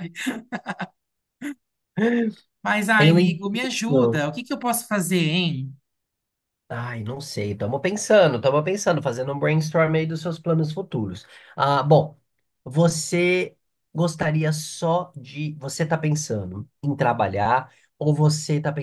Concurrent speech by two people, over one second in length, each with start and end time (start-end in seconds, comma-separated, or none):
3.0-4.2